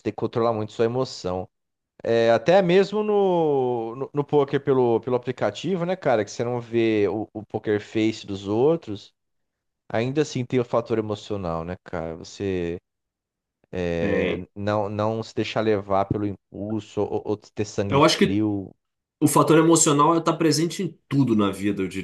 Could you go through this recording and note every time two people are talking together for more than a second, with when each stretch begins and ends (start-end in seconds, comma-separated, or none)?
none